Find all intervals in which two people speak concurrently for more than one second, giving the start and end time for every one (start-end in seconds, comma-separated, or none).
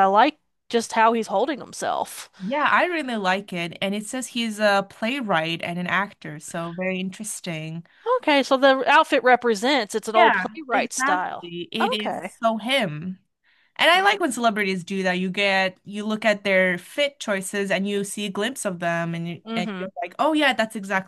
10.1-12.3